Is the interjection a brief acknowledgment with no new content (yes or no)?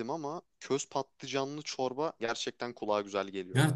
no